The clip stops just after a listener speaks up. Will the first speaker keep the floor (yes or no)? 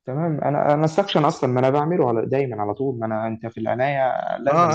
no